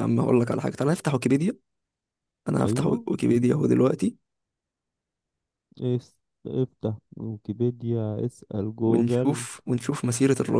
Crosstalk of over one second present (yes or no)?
no